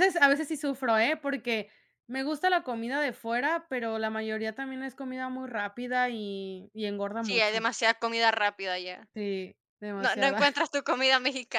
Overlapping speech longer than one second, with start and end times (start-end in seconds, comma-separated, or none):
none